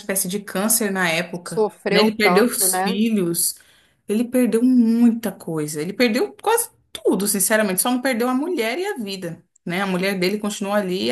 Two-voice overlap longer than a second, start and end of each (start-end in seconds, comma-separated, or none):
1.4-3.0